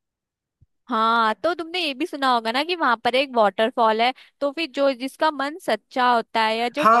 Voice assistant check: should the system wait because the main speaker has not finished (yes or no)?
no